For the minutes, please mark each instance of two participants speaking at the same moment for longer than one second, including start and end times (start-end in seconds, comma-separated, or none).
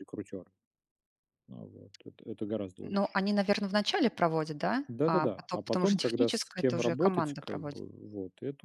4.9-7.8